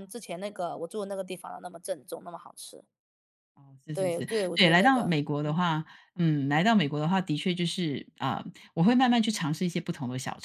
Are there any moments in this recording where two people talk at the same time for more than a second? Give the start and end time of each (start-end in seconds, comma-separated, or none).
3.9-5.6